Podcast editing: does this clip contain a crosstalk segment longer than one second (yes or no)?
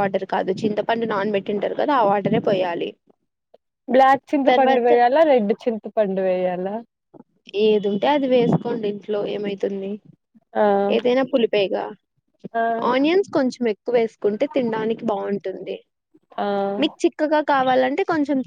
no